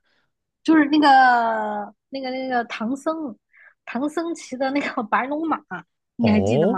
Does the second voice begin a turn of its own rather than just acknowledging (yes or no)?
yes